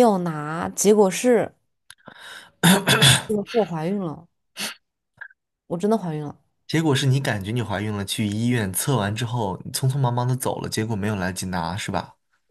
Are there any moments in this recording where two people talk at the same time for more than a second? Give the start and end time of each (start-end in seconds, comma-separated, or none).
none